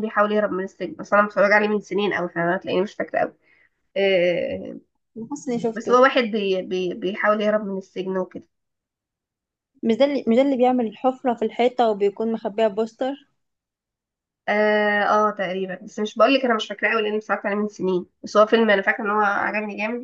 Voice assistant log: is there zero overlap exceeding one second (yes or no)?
yes